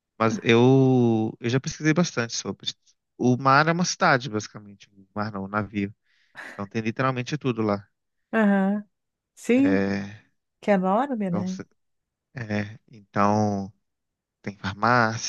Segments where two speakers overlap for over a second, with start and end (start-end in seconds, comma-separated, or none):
none